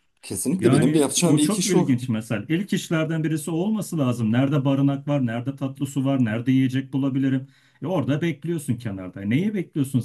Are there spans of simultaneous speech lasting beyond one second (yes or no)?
yes